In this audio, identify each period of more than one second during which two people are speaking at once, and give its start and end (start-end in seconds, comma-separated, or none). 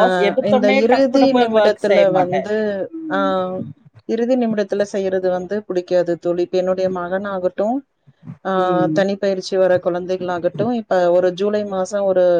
0.5-2.4